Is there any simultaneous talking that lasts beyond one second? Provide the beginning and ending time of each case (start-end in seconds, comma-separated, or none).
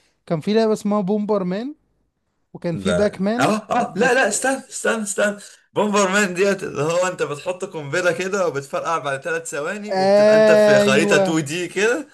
2.7-4.3, 9.9-11.4